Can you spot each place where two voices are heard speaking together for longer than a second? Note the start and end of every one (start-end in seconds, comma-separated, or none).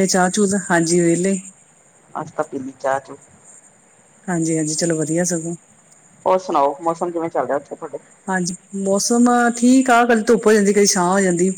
none